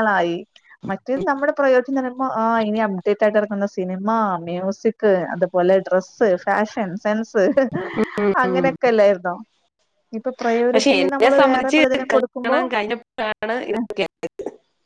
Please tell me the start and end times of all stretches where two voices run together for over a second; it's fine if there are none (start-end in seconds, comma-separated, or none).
10.7-12.6